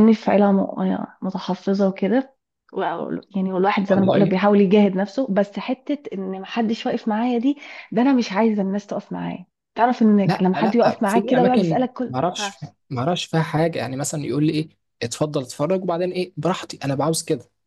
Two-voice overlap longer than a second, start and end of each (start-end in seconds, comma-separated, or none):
10.3-12.5